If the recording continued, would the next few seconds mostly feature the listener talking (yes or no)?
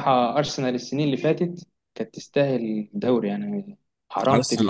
yes